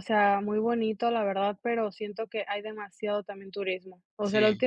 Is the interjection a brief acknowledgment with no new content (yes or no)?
yes